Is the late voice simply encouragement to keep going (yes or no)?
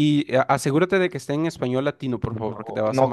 no